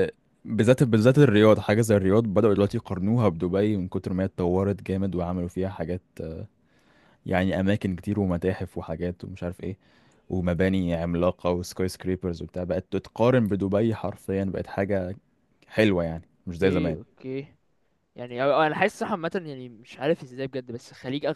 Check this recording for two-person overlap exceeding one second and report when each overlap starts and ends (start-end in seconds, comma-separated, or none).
none